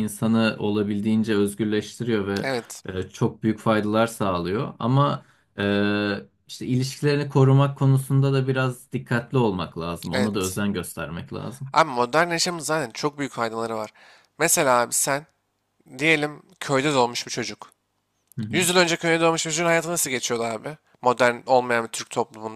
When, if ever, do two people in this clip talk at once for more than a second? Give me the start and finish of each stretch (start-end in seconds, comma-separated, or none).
none